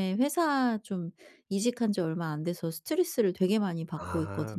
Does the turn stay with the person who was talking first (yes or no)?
no